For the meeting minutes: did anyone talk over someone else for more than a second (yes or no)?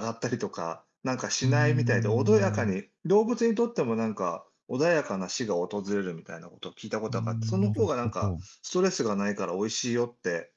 yes